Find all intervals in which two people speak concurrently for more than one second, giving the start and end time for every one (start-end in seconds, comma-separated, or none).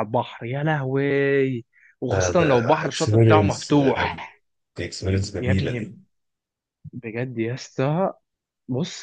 2.1-3.7